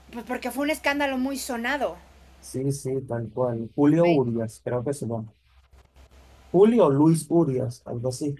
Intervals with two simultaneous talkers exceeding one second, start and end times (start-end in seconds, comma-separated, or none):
none